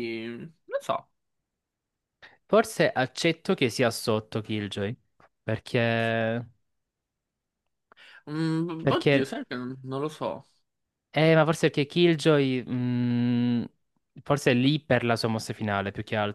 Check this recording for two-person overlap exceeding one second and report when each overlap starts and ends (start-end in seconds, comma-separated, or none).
none